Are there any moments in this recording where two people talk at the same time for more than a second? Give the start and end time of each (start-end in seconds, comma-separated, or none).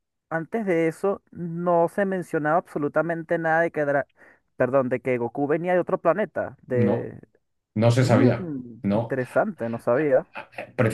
none